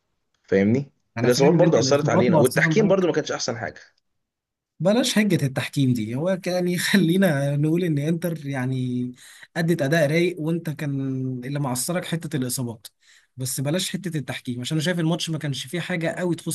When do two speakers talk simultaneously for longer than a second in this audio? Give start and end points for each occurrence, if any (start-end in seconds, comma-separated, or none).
1.2-3.1